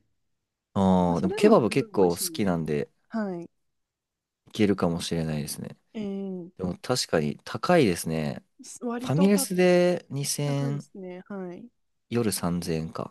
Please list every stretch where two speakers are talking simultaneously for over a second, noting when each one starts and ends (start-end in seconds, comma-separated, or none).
1.1-2.5